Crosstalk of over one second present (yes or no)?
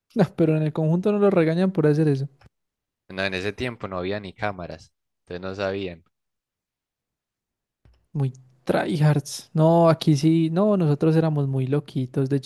no